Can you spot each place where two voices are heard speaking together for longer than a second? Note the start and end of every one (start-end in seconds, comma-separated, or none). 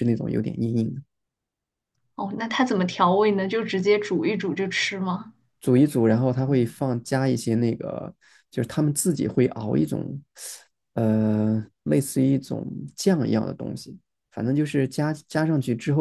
none